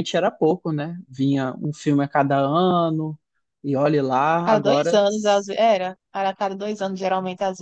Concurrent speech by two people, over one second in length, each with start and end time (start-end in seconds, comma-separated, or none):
none